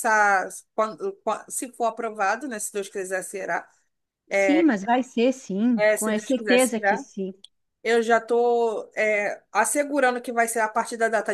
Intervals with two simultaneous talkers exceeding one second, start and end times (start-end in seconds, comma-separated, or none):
5.8-7.0